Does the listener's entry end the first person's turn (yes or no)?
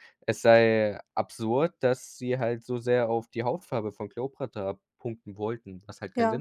yes